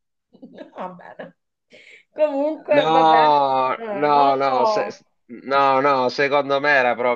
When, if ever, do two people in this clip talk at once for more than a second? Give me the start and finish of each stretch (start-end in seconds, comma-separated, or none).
2.8-4.9